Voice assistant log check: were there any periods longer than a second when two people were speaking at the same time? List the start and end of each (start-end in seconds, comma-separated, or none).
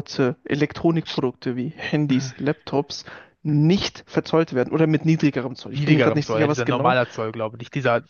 5.8-7.0